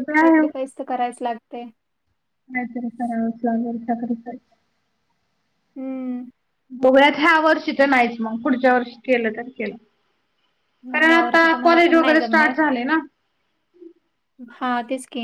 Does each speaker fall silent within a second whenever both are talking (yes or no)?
no